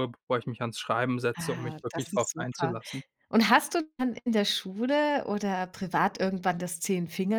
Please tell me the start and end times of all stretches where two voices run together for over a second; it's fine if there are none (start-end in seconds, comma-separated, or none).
1.4-2.7